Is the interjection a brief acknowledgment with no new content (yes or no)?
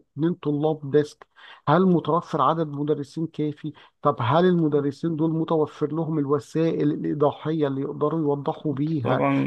no